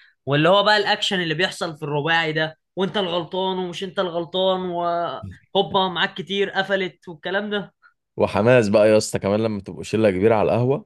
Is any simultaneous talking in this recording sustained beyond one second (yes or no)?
no